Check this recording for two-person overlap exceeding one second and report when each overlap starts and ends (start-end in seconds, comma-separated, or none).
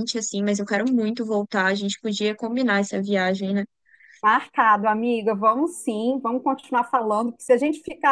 none